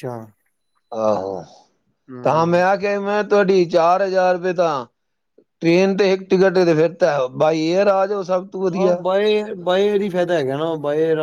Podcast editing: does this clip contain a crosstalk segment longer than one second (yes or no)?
no